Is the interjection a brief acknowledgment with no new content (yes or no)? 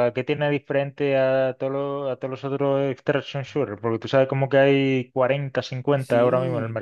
no